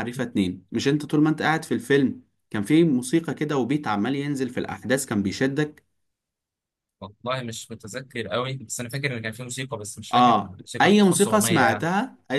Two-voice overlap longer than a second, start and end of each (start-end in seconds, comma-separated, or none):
10.1-11.9